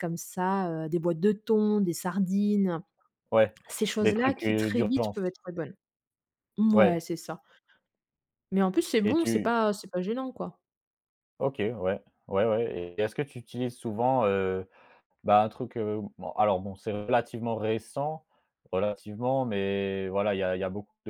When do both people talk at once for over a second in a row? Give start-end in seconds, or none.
4.0-5.2